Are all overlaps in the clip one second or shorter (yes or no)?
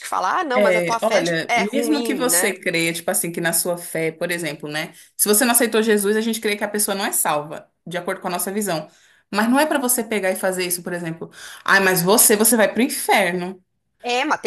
no